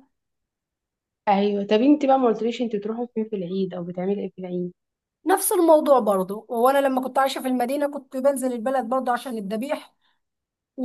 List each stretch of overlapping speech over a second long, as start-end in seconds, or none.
none